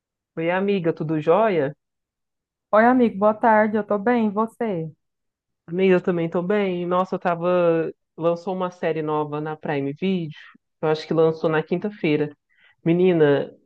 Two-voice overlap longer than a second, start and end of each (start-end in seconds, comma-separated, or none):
none